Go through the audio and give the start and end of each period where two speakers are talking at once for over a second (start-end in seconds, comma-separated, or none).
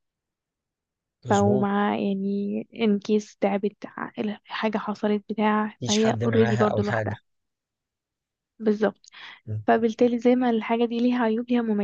5.8-7.2